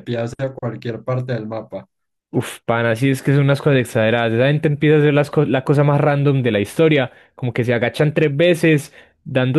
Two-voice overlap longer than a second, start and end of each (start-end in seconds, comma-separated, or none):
none